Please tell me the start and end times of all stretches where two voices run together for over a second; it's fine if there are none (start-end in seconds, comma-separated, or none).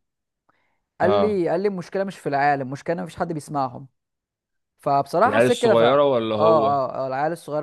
5.3-6.8